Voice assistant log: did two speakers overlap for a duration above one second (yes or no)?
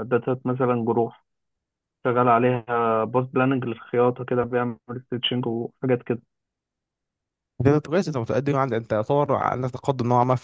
no